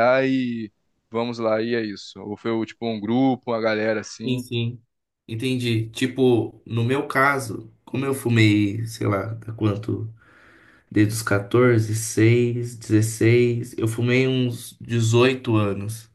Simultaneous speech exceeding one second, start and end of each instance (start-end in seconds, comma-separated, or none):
none